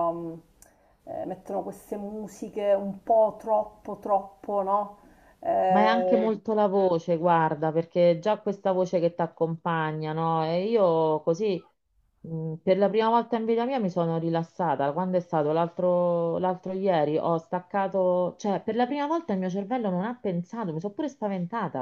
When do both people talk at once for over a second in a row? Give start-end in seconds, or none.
none